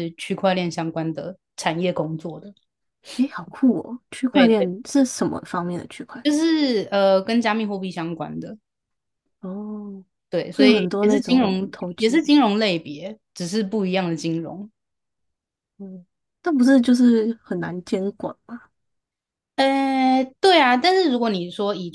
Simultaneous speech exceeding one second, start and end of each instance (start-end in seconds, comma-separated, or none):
10.5-12.2